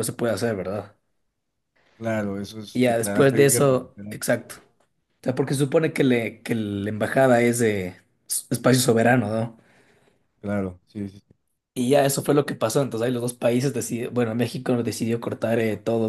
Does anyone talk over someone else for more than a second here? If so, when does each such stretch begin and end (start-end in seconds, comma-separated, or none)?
2.7-4.2